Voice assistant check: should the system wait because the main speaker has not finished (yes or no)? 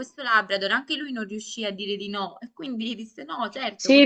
no